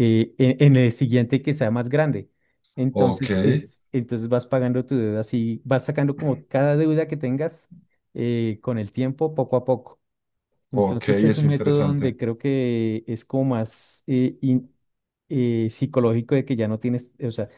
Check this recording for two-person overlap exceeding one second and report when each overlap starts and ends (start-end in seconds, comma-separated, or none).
10.7-12.2